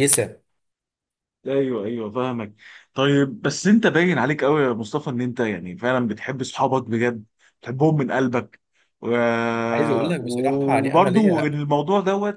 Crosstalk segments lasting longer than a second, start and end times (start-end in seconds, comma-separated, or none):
10.2-11.5